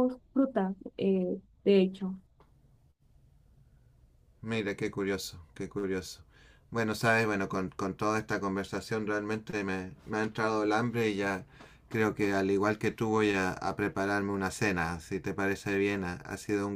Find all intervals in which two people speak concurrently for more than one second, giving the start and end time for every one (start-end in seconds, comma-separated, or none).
none